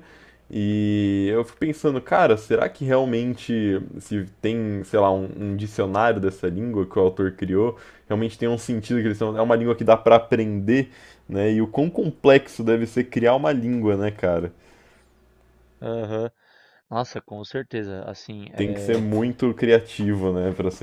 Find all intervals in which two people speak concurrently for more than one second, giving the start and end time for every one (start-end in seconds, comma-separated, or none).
none